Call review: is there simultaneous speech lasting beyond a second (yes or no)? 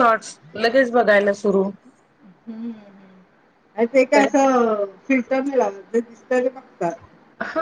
no